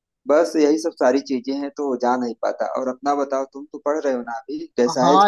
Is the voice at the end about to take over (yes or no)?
yes